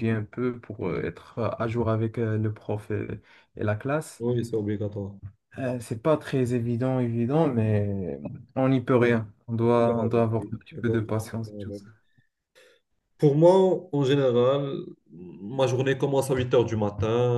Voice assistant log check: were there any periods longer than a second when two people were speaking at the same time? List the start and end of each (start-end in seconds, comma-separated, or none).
9.7-11.8